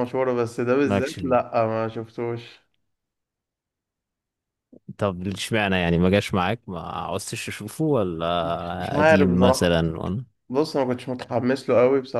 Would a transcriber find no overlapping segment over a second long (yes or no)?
no